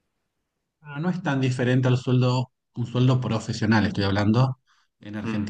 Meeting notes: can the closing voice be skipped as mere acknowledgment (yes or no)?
yes